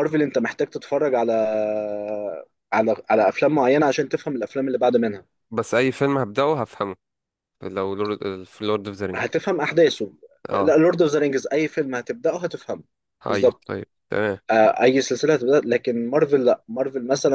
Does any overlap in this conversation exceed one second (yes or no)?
no